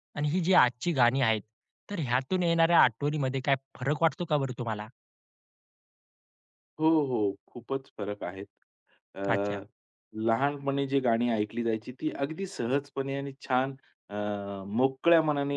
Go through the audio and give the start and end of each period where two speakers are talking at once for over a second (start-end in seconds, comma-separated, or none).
none